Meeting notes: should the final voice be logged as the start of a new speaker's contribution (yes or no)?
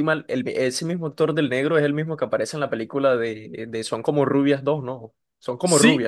yes